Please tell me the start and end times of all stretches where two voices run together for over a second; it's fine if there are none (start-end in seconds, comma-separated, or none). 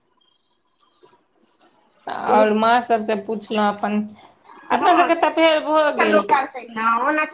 4.8-6.3